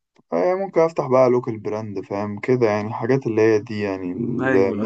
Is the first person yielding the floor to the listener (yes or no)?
yes